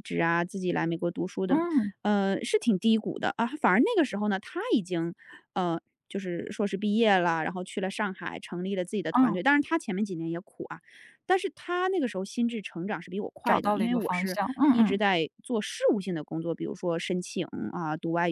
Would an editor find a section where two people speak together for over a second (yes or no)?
yes